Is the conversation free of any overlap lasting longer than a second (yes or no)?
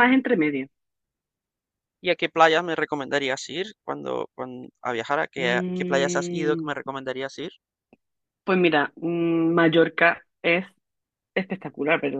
no